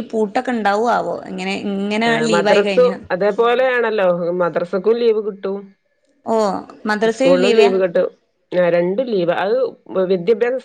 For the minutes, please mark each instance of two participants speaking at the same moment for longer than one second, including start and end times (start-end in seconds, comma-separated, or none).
none